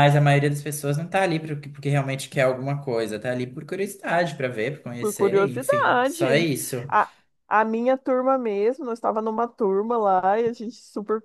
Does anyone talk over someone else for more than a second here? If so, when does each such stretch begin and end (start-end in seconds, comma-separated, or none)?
5.0-6.2